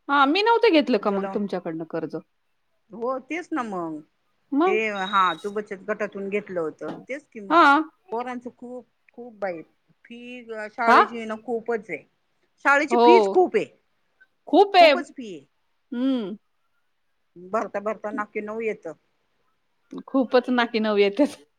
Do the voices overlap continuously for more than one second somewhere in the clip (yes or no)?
no